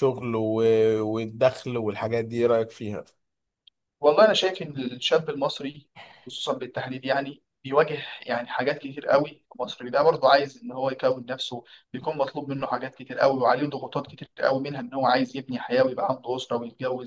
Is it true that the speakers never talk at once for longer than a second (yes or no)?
yes